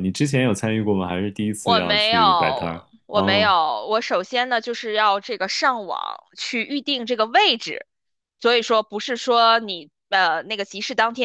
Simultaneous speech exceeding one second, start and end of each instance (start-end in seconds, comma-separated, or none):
1.6-3.5